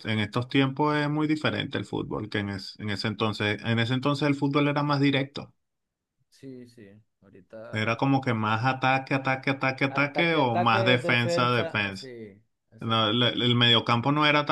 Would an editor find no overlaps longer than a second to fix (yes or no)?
no